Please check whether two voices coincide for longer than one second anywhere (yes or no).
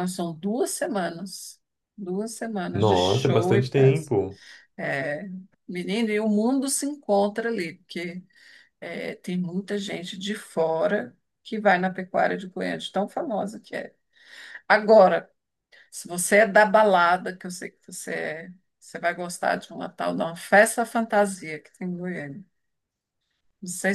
yes